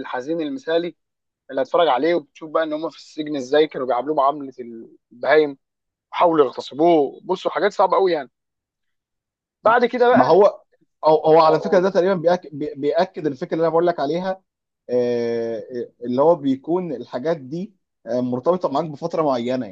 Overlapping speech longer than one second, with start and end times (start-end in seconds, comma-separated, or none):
none